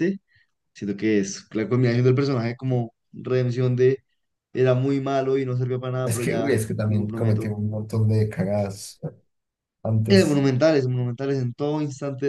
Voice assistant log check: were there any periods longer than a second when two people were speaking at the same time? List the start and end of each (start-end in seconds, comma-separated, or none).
6.0-7.6